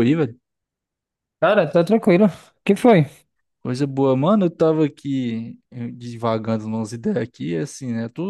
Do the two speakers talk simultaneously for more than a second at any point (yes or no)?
no